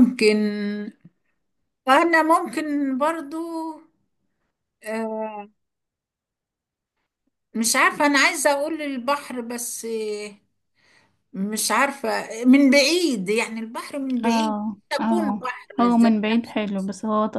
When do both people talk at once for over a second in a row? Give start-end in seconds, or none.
14.2-16.1